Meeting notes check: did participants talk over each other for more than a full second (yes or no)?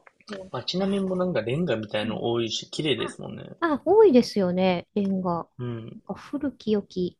no